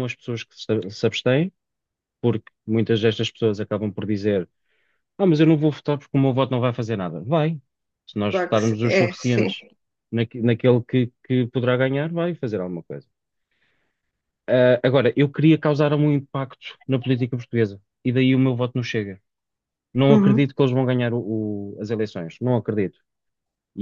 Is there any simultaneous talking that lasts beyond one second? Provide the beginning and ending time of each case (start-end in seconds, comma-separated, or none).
8.3-9.5